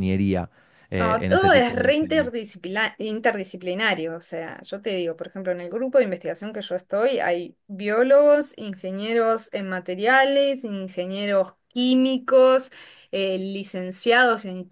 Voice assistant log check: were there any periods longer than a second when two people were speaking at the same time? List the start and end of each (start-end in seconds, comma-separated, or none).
1.0-2.3